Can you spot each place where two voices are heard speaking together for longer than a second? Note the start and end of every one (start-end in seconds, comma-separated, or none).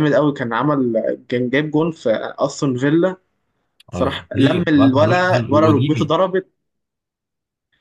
3.9-6.0